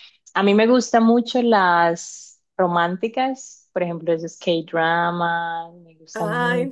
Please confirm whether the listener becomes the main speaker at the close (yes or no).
yes